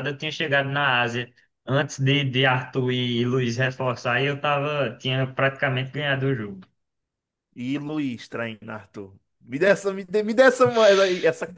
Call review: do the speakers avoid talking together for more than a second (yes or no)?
yes